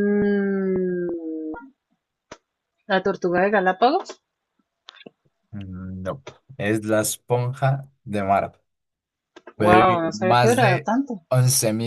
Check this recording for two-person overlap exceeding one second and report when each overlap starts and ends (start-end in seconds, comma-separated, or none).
9.6-10.9